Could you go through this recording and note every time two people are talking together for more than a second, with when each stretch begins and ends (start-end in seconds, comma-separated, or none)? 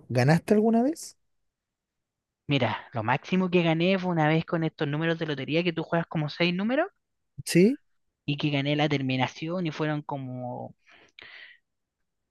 none